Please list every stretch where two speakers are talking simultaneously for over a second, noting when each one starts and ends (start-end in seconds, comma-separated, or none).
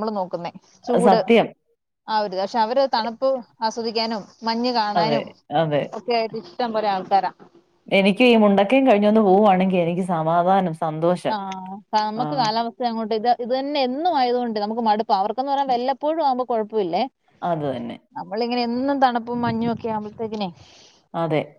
none